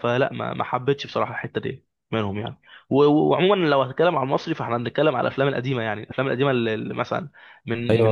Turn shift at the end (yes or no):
yes